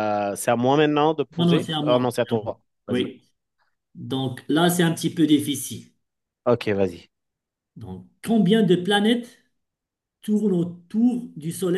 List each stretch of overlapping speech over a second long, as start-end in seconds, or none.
1.4-3.1